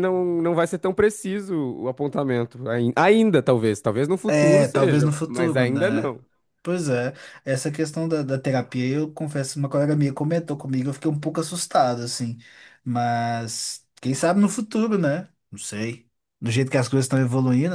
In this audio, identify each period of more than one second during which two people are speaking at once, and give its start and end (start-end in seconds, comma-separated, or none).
4.3-6.1